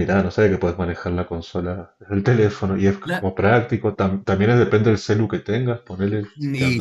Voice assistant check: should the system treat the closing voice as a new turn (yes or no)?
yes